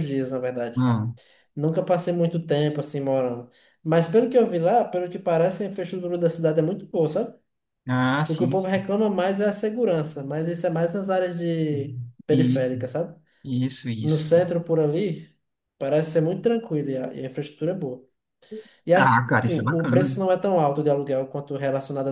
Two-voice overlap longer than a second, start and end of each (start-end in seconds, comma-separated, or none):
18.9-20.2